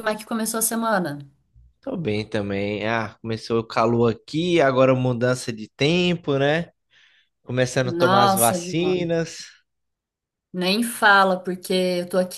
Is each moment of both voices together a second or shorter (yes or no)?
no